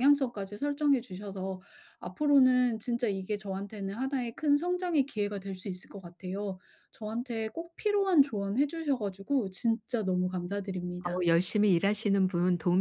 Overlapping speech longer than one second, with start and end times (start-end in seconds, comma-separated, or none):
none